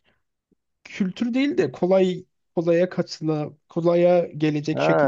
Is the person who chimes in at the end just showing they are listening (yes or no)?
no